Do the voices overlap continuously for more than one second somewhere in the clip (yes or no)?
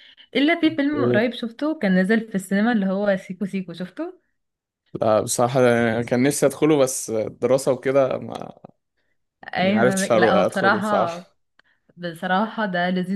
yes